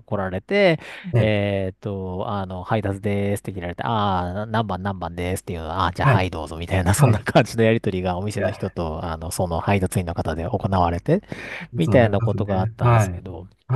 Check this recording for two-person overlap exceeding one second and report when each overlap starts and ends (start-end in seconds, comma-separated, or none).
11.8-13.2